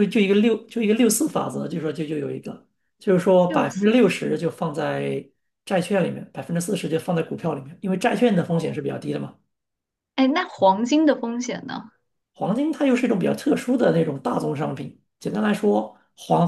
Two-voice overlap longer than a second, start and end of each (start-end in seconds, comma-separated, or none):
none